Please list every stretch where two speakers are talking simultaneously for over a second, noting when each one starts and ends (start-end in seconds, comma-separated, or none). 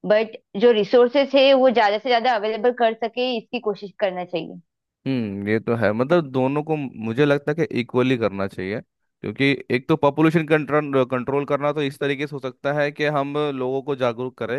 none